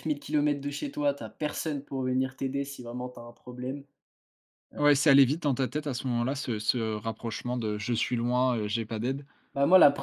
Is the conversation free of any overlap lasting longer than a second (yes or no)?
yes